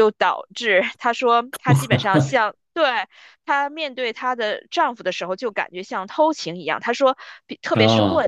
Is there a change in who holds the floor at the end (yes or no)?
no